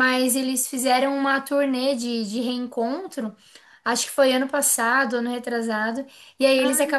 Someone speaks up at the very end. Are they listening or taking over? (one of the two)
listening